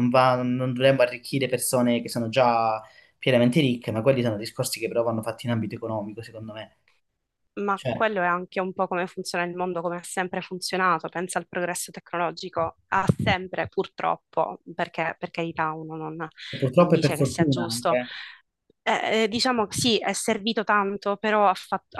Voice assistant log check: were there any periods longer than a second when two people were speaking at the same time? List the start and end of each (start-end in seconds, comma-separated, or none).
16.8-18.0